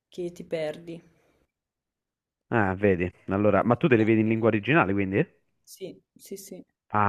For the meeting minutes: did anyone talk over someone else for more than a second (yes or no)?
no